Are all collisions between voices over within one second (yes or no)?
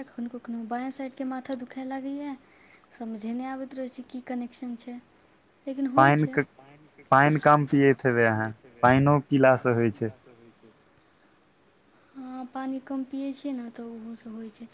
yes